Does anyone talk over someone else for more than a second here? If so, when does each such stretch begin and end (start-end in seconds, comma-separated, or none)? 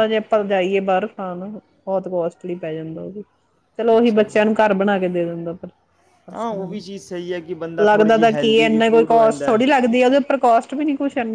7.8-9.6